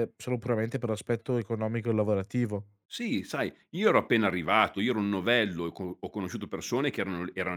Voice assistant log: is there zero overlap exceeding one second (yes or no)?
yes